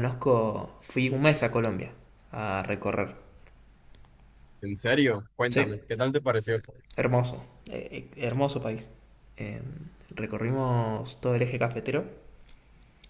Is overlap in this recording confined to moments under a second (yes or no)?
yes